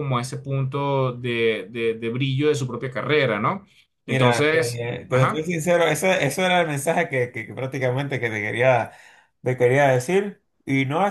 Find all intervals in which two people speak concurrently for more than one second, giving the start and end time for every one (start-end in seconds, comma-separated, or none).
4.1-5.5